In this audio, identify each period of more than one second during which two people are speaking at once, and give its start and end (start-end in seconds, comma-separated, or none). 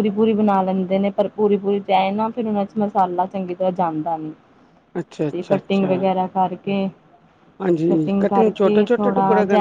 none